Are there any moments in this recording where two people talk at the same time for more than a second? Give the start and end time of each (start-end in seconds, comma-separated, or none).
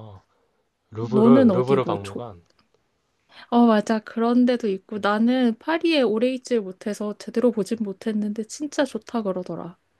1.0-2.2